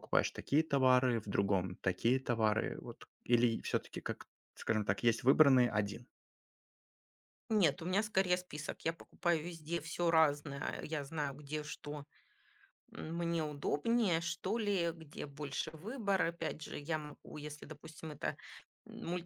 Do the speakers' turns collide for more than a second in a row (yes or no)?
no